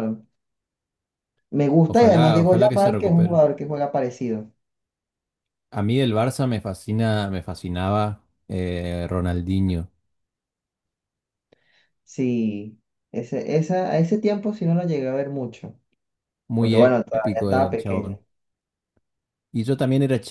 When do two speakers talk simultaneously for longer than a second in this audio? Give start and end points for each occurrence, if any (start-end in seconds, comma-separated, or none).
1.9-3.4, 16.6-18.2